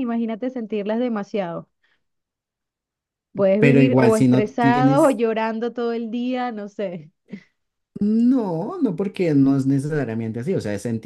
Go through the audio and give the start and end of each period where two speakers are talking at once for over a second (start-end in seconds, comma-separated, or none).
3.6-5.2